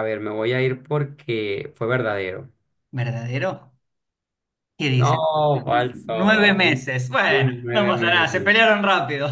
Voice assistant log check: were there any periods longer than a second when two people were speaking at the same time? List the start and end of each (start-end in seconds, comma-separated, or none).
6.1-8.5